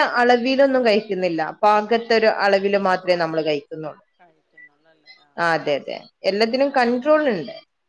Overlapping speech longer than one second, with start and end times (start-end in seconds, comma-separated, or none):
none